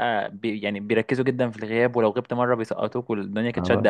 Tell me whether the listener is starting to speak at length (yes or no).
yes